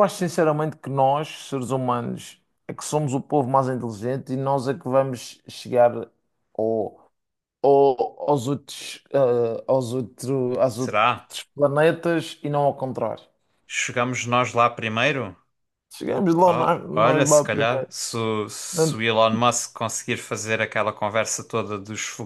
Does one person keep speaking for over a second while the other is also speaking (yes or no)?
yes